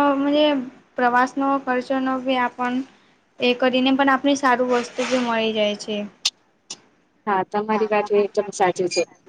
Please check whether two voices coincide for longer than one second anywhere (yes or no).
no